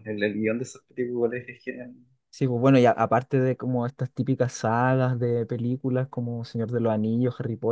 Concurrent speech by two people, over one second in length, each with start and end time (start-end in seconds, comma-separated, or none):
none